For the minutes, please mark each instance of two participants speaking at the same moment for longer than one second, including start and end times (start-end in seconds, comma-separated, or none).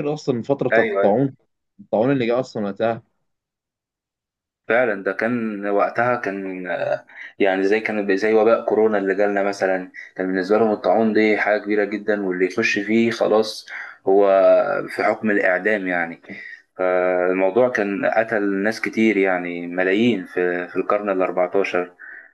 none